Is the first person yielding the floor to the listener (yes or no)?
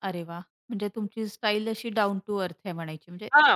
yes